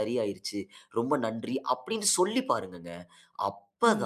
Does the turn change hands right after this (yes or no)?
no